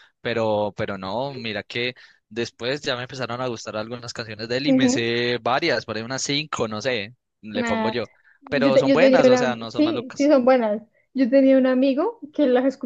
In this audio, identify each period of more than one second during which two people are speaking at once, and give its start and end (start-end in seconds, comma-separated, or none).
8.6-10.3